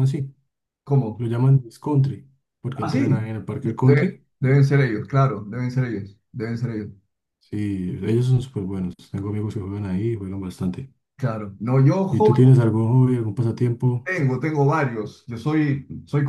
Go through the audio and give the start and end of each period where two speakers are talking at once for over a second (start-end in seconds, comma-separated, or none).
2.7-4.2